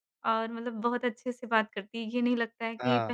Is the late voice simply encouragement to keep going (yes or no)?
yes